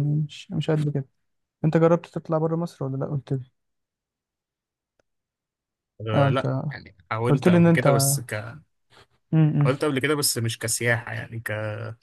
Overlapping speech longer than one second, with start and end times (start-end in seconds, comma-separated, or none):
none